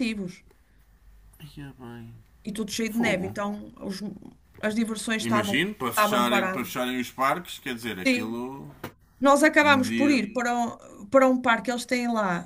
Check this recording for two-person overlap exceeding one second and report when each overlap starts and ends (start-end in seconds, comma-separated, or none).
5.2-6.7